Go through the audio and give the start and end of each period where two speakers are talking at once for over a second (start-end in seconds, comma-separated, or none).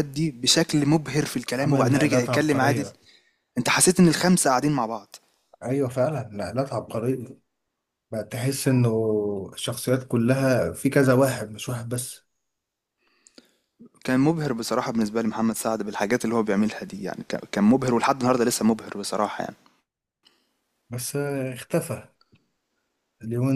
1.6-2.8